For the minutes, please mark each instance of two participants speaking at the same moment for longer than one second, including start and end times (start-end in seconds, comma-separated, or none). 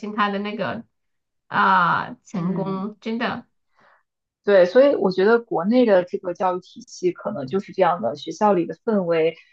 none